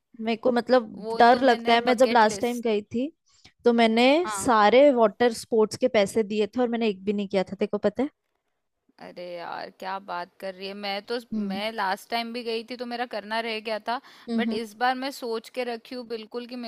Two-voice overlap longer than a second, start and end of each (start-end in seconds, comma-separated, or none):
1.0-2.7